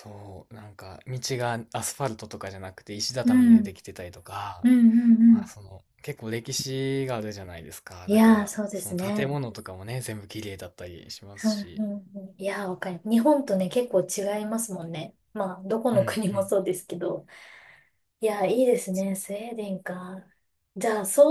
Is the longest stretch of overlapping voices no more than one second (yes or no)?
no